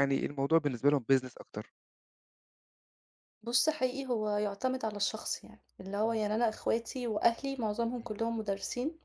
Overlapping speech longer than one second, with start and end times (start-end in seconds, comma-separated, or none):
none